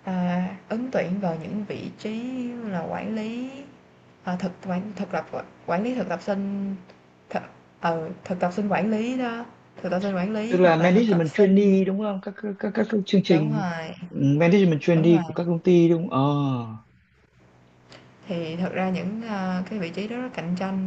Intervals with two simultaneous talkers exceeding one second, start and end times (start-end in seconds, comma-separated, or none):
10.5-11.7